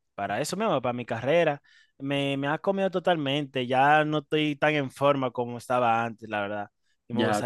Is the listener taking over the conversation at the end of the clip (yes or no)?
yes